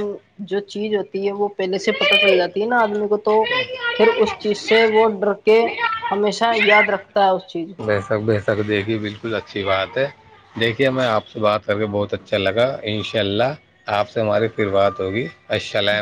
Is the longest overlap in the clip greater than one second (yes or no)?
no